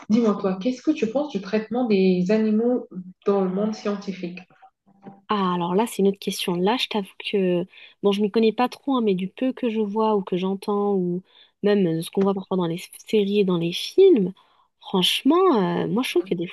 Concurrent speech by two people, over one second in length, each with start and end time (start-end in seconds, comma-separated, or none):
none